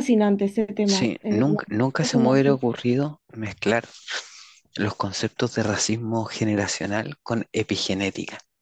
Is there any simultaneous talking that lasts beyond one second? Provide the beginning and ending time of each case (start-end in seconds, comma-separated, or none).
0.8-2.6